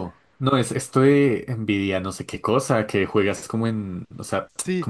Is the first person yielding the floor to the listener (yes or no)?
no